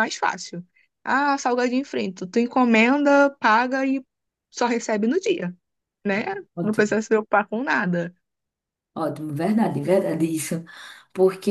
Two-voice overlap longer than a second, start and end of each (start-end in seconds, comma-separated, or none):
none